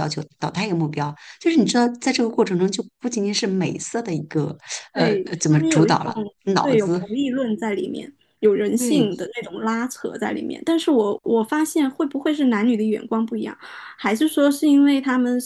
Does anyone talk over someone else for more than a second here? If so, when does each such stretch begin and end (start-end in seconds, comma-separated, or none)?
4.9-7.0